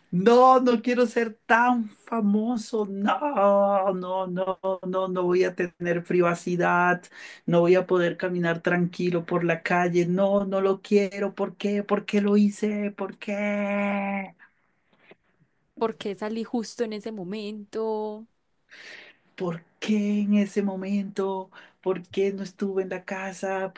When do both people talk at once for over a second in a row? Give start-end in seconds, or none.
none